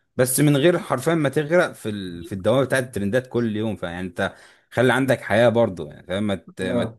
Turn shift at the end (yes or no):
no